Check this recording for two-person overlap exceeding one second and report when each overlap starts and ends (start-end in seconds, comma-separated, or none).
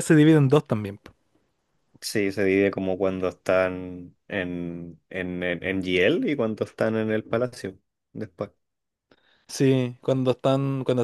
none